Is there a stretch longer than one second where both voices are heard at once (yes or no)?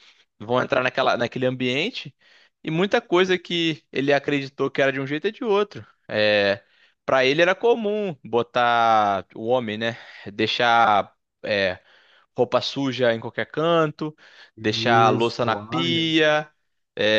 yes